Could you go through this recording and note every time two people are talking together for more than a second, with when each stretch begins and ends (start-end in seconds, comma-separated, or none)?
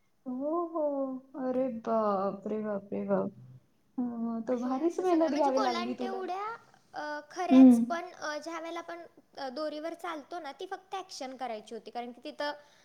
4.6-6.2